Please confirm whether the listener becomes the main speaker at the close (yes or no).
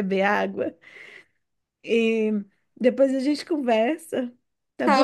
yes